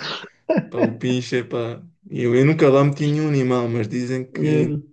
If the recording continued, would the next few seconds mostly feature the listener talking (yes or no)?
no